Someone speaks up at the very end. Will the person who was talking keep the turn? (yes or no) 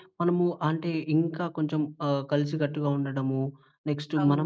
yes